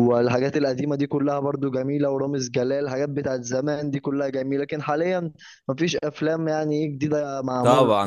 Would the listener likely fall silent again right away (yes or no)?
no